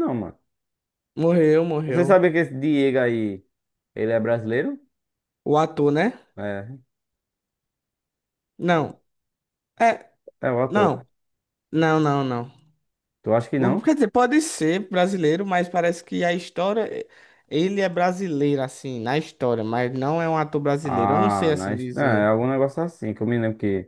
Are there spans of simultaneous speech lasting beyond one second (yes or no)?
yes